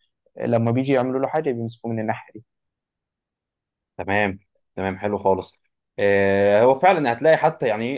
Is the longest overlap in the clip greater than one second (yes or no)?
no